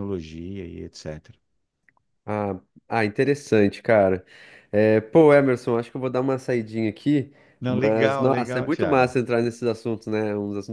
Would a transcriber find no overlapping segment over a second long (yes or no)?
no